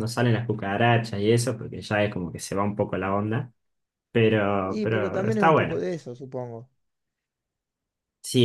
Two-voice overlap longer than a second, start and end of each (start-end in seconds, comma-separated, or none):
4.7-5.9